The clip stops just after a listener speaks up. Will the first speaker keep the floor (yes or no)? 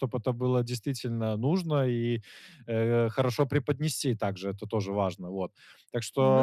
yes